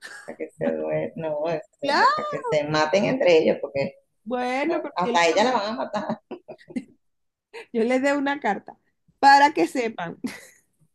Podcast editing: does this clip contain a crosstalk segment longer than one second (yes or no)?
no